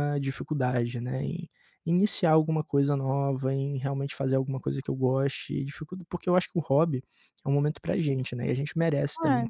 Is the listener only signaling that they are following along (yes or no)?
no